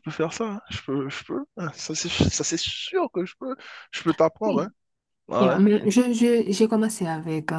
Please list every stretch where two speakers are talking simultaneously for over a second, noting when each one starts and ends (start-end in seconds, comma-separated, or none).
none